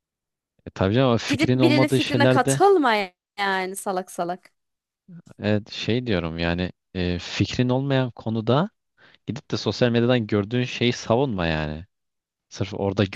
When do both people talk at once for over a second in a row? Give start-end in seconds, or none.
1.3-2.6